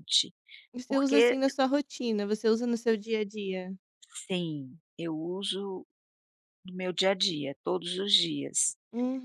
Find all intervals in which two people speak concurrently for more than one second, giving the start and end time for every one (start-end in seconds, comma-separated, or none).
none